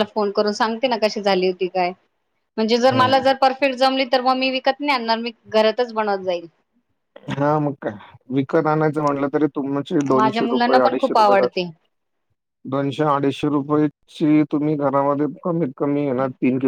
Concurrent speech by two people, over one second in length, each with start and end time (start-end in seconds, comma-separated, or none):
10.2-11.6